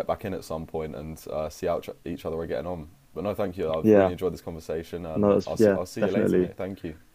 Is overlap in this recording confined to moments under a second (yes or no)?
no